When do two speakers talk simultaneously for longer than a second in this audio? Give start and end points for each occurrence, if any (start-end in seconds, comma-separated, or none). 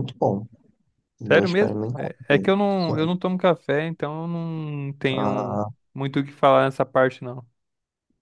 1.2-3.1